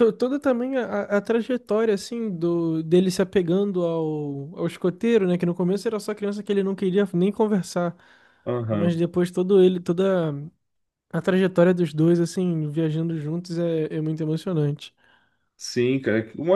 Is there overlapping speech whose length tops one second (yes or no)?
no